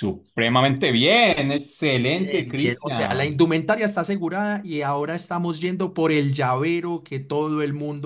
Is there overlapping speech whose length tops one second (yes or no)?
yes